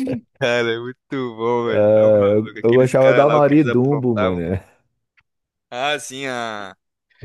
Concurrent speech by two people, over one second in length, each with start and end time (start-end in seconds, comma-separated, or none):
1.7-4.4